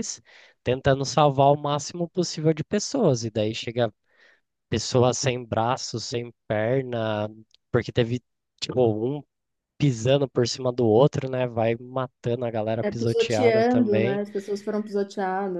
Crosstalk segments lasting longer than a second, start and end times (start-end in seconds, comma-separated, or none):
12.8-14.2